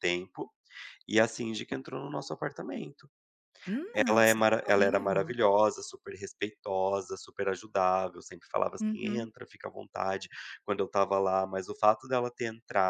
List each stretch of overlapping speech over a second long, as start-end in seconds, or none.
4.1-5.3